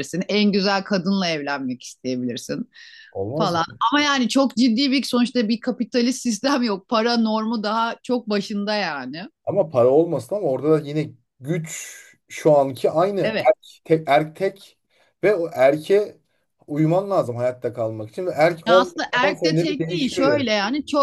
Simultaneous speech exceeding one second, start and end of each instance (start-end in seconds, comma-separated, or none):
18.7-20.5